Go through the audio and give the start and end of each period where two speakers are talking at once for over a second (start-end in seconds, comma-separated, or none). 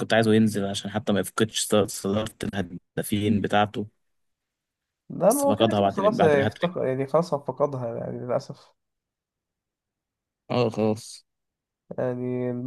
5.3-6.7